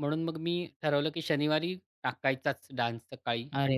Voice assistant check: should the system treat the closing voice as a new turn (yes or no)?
yes